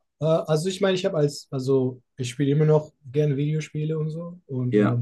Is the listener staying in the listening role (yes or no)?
yes